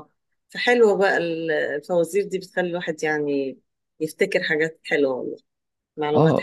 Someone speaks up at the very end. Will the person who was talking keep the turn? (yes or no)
no